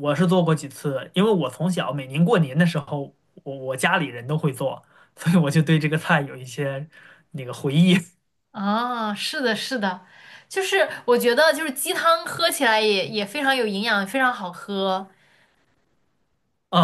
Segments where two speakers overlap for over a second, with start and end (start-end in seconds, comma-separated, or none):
none